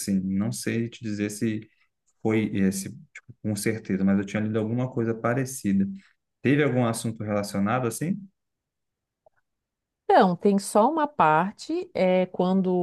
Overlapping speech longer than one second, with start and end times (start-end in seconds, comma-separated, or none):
none